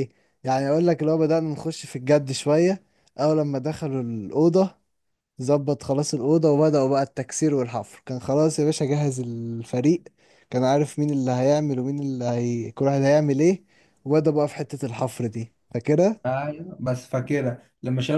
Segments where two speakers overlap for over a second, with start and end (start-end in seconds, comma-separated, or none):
none